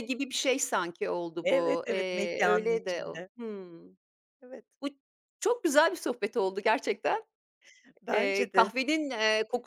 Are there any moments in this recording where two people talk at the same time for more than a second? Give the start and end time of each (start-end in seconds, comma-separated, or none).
1.4-3.3